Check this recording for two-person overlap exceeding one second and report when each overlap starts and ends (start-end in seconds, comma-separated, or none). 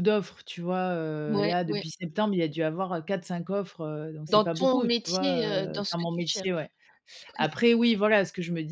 4.3-6.7